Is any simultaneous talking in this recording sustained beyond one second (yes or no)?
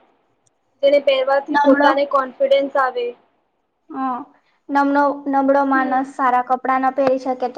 no